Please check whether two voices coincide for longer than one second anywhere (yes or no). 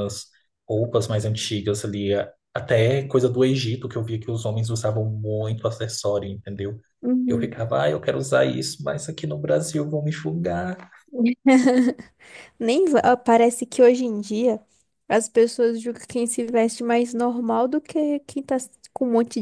no